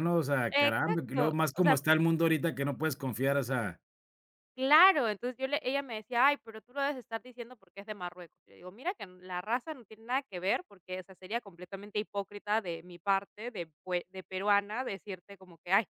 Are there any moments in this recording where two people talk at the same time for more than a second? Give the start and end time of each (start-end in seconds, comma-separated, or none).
0.5-1.8